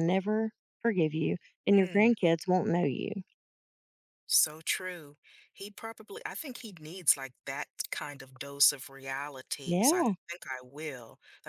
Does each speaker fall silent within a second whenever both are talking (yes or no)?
yes